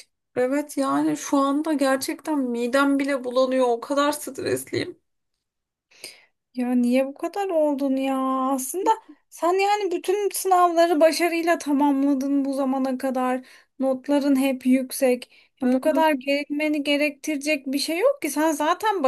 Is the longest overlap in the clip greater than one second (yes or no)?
no